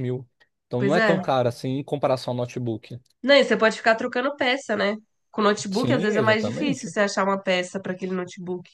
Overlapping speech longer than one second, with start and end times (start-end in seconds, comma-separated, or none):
5.7-7.0